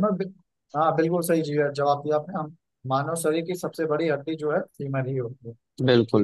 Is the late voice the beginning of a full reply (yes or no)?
yes